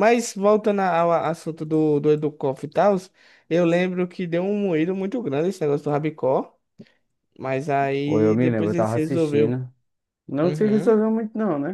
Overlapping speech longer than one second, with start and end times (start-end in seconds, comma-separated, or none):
8.0-9.6